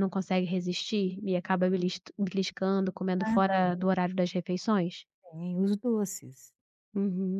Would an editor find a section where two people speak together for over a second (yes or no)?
no